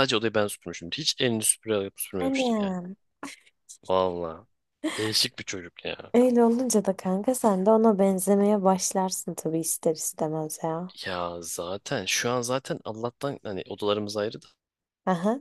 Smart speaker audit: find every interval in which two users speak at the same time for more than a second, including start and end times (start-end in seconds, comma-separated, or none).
none